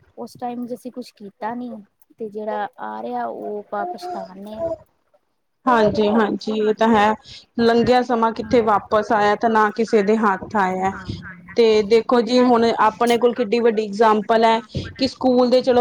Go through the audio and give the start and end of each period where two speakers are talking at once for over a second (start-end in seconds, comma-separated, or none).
none